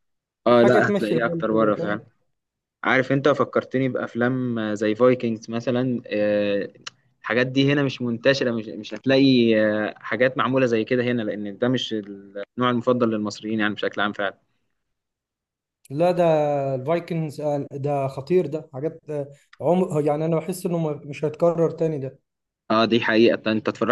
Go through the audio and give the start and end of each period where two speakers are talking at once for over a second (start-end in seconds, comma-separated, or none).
0.5-2.0